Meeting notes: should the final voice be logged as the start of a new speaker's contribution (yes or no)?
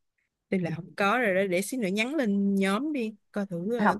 yes